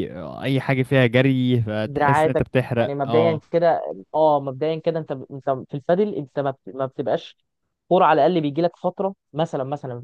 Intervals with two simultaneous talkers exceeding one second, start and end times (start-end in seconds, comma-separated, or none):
1.8-3.4